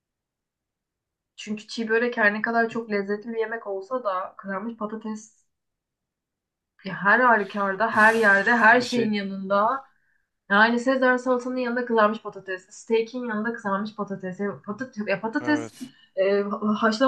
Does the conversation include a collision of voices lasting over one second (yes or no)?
yes